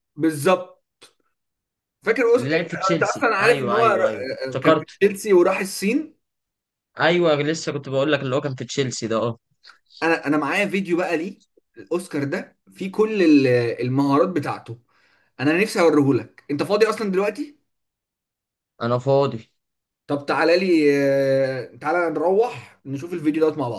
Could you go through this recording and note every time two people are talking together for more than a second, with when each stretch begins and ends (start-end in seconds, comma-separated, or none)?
2.4-3.9